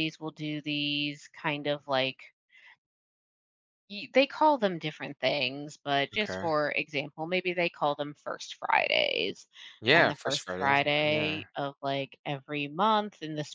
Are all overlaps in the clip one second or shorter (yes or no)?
no